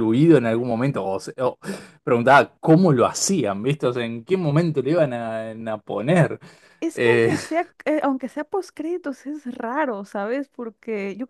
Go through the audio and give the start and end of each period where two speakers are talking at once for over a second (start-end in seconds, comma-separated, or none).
none